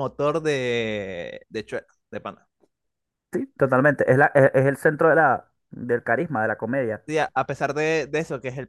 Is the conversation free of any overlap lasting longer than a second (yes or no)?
yes